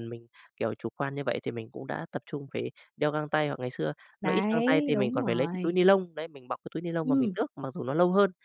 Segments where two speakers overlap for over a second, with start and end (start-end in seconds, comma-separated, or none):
4.2-5.8